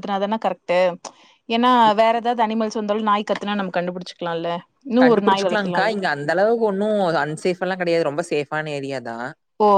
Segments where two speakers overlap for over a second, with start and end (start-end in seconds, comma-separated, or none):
none